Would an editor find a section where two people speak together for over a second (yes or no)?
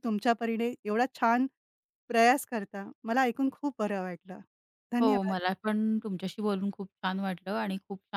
no